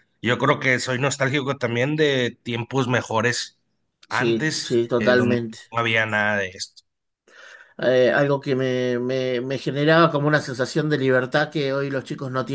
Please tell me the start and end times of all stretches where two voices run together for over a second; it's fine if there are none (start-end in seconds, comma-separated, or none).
4.1-5.6